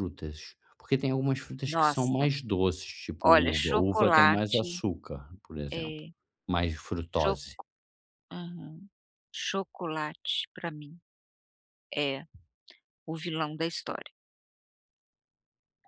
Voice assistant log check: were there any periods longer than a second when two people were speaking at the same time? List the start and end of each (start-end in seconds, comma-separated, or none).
3.2-4.8